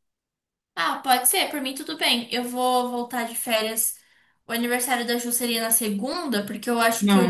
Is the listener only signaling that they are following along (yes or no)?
no